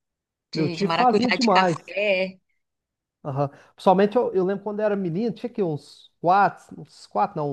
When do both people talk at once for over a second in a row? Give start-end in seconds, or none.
0.5-2.0